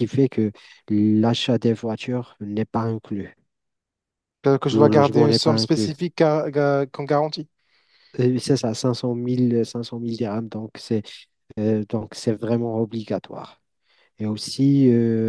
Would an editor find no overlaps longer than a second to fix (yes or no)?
no